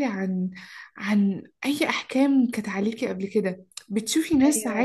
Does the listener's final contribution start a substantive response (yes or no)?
no